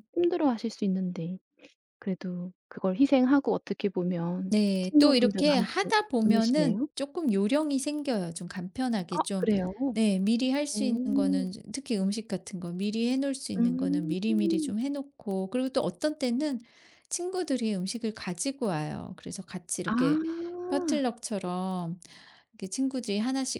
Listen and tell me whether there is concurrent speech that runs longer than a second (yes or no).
yes